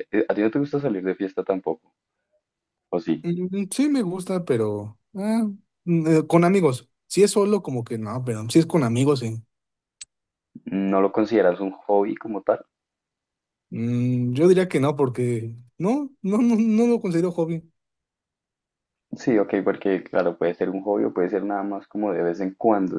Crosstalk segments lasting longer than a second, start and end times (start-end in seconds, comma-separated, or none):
none